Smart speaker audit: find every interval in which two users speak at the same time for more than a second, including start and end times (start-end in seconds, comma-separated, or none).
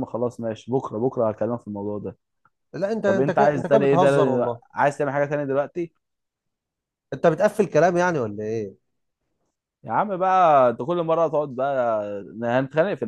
3.0-4.6